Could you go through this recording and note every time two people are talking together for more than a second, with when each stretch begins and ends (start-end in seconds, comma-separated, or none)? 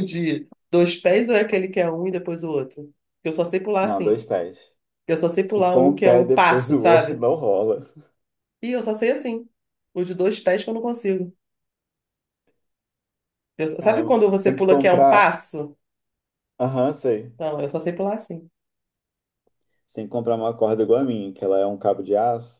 5.4-7.2, 13.8-15.4